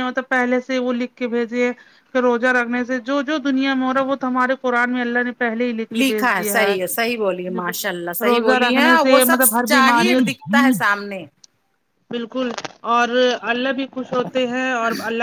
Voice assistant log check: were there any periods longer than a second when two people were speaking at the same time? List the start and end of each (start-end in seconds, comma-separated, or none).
6.0-7.6, 8.3-10.2